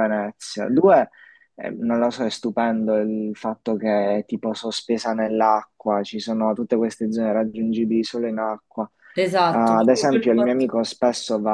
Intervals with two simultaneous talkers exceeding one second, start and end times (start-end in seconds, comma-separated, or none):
9.5-10.8